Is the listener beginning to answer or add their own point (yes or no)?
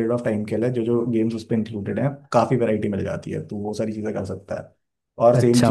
yes